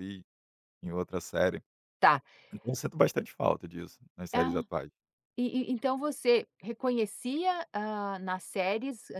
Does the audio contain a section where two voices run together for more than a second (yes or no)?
no